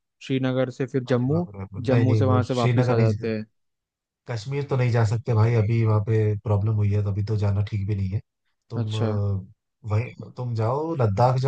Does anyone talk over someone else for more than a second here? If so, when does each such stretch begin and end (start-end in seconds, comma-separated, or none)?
1.1-3.1